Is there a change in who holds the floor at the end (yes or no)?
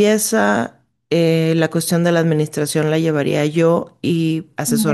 no